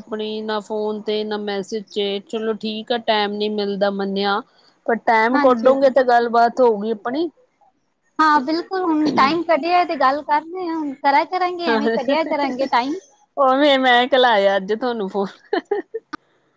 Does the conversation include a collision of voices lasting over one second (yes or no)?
no